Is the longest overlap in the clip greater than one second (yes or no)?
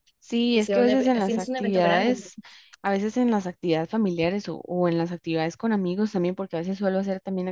yes